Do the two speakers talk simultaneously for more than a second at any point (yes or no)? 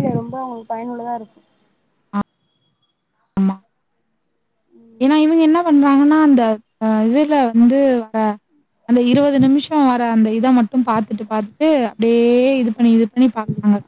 no